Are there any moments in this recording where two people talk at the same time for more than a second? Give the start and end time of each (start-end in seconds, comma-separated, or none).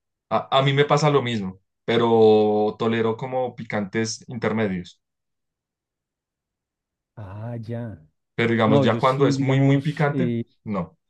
8.7-10.4